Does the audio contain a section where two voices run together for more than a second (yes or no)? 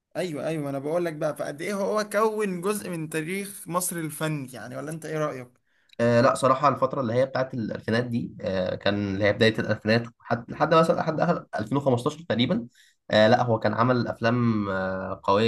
no